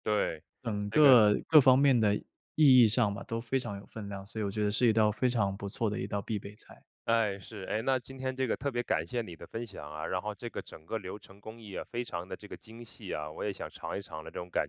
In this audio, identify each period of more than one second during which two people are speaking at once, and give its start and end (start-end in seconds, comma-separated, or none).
none